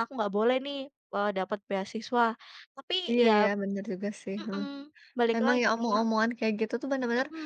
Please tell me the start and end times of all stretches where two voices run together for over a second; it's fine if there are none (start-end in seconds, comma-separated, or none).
none